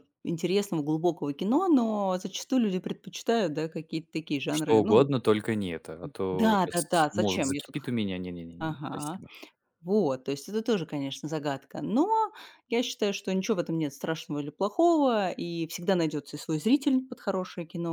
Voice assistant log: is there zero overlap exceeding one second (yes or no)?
no